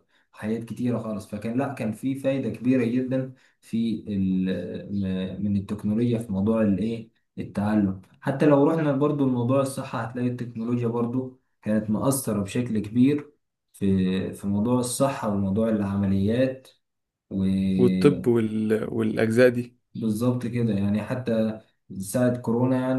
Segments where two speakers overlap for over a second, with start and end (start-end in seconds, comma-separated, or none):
none